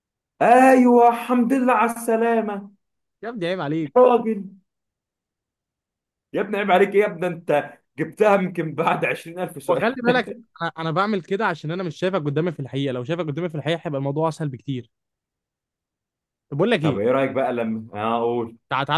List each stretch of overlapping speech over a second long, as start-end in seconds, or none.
none